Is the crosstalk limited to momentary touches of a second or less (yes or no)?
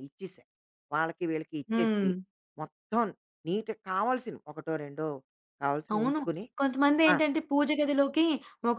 yes